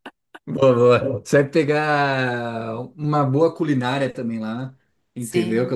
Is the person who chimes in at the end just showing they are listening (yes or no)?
yes